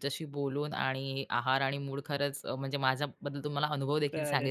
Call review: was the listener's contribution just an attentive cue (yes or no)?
yes